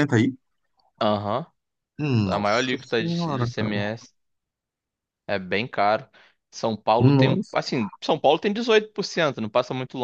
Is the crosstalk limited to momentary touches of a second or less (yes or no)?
no